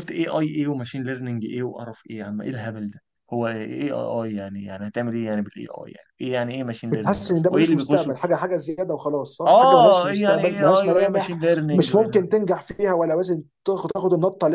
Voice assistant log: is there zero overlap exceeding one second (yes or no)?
no